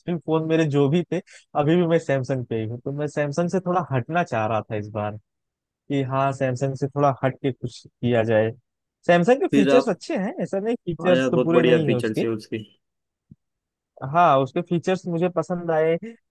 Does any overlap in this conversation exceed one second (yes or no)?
yes